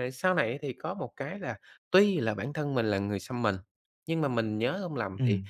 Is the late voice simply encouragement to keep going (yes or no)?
yes